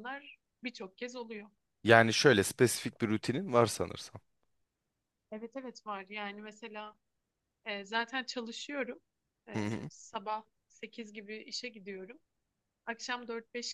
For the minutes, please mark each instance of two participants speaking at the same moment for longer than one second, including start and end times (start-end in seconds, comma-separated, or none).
none